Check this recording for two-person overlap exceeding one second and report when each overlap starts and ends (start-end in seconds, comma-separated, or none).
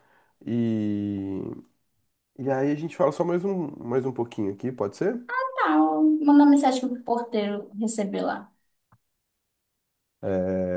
none